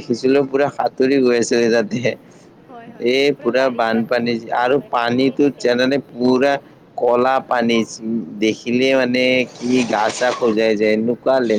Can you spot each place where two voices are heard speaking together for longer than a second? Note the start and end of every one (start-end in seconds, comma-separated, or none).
3.1-6.0